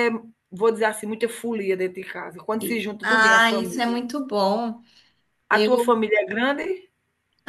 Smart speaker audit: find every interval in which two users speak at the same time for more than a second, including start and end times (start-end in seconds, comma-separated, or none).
2.6-4.0